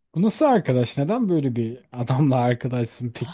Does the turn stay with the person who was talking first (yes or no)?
no